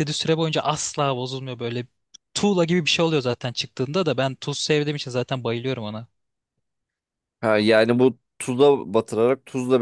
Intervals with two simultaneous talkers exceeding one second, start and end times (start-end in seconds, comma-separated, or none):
none